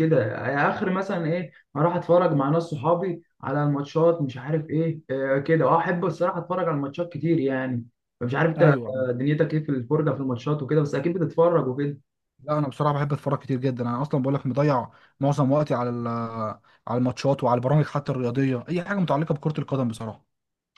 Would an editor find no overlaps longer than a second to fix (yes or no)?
yes